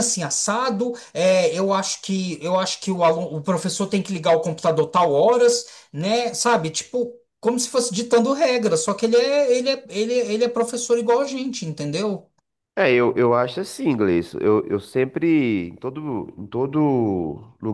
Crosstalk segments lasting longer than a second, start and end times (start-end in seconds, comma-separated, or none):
none